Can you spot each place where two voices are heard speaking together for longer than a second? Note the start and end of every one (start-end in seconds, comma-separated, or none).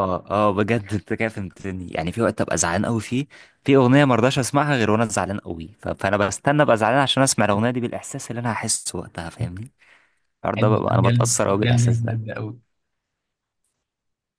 10.6-12.2